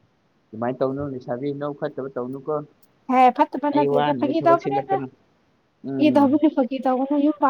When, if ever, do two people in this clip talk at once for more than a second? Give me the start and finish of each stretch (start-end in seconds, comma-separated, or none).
3.7-5.0